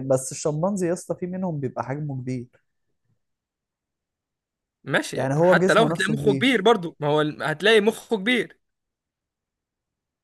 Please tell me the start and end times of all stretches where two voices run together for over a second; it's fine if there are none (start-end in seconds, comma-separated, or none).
5.1-6.7